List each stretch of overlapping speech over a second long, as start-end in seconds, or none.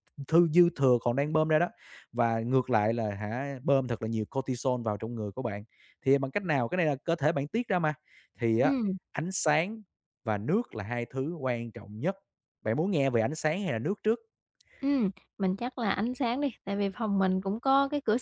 none